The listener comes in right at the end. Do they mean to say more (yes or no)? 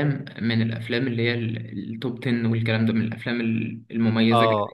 yes